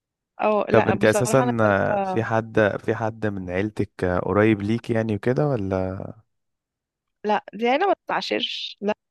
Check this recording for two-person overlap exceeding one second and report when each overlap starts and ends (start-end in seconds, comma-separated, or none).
0.7-2.2